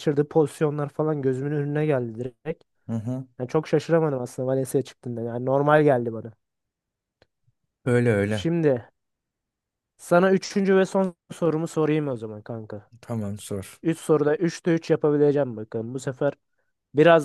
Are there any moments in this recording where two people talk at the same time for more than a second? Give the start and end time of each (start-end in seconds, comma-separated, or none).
none